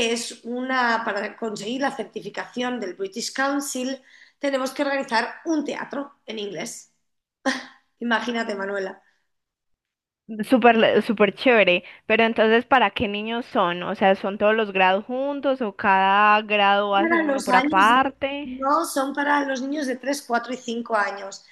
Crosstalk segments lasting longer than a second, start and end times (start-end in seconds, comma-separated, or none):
17.0-18.5